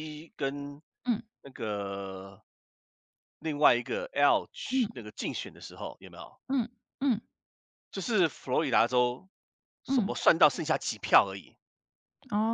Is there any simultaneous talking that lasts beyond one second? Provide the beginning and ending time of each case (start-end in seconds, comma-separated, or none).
none